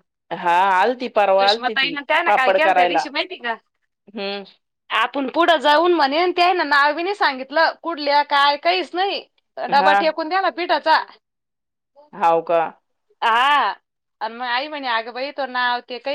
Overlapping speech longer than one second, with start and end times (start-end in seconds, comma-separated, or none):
1.4-3.0